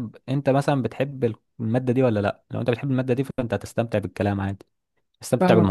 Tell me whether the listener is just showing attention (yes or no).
no